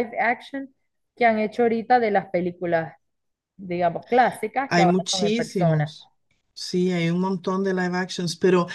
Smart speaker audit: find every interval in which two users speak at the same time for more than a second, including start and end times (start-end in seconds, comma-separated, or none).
4.7-5.9